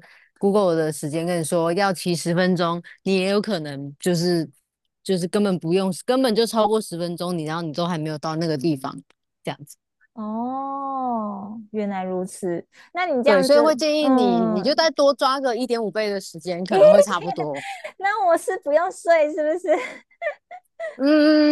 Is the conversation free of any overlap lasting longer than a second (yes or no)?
no